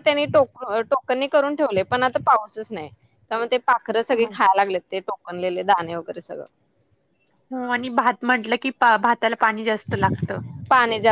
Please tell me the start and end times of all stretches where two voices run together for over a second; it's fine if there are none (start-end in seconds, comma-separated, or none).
none